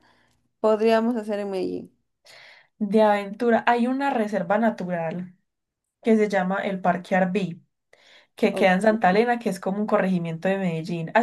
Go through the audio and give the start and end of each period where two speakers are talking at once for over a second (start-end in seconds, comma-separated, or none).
none